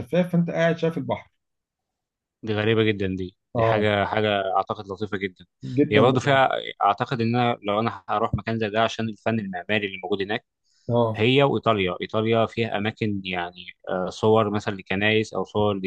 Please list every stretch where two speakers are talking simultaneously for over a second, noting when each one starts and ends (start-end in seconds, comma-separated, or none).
none